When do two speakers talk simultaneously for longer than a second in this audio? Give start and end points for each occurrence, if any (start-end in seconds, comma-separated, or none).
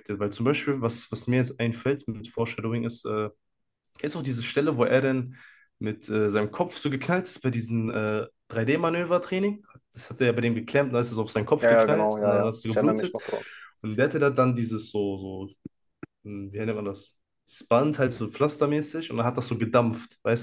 11.6-13.1